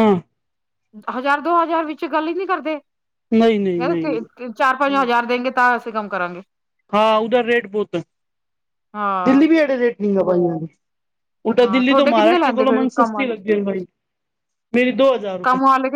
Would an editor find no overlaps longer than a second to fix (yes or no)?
no